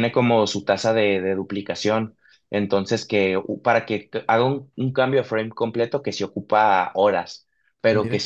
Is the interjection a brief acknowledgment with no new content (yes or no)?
yes